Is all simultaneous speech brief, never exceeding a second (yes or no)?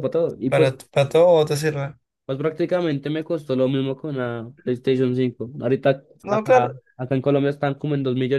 yes